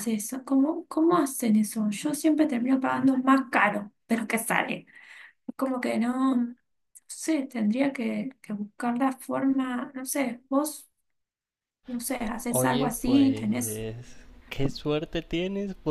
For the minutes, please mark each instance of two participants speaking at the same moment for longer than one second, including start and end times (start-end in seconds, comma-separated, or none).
12.5-13.8